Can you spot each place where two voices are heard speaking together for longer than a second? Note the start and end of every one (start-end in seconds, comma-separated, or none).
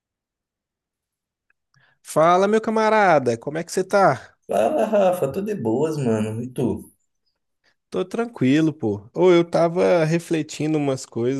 none